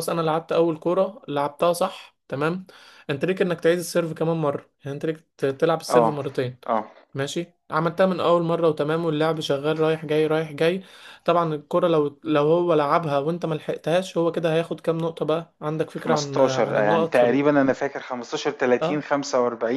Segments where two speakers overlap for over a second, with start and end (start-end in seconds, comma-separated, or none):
15.9-17.4